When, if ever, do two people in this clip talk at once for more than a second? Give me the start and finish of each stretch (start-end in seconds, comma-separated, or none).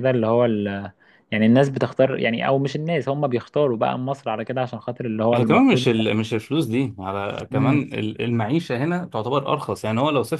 none